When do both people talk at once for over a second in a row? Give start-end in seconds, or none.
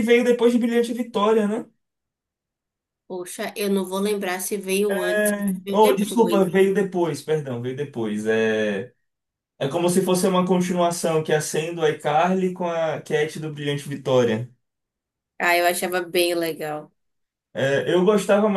4.9-6.5